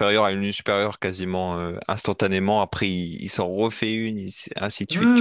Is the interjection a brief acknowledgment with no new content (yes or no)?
no